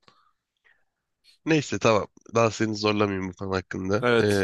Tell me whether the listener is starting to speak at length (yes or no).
yes